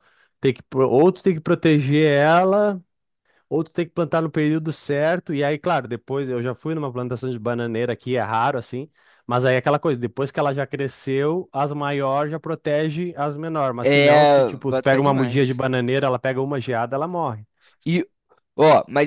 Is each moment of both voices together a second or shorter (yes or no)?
no